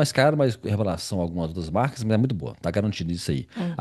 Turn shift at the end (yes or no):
no